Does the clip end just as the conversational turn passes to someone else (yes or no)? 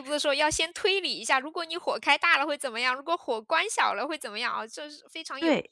yes